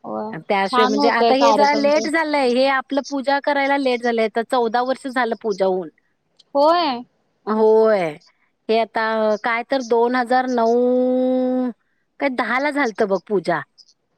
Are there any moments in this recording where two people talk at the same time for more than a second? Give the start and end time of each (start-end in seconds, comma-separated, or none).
0.7-2.0